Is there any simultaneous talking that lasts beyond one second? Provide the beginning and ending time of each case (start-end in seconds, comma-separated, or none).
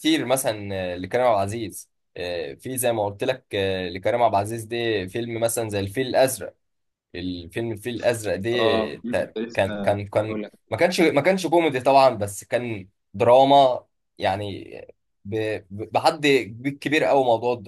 8.5-10.5